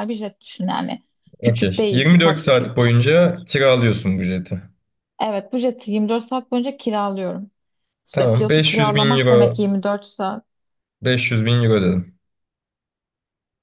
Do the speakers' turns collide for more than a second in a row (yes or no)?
yes